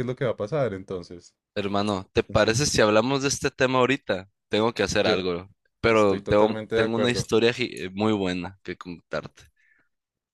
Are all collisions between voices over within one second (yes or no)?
no